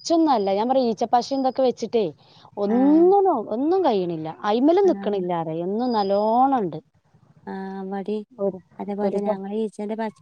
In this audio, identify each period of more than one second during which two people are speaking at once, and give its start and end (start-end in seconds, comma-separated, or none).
none